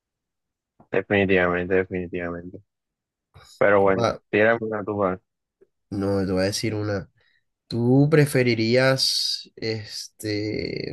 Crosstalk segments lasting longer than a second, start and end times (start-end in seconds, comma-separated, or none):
none